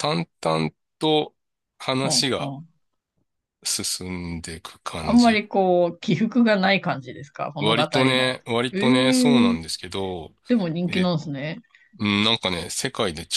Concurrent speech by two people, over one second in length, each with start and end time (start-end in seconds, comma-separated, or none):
7.6-9.6